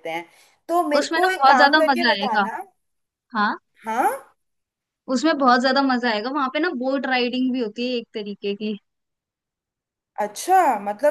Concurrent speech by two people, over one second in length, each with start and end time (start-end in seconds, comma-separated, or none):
1.0-2.5